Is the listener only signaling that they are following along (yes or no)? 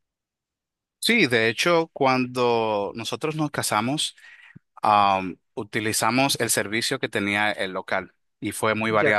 yes